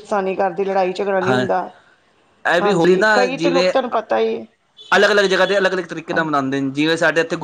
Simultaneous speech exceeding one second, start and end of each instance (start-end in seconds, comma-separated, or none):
none